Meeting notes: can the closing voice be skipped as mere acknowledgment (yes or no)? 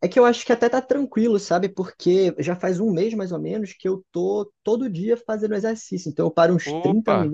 yes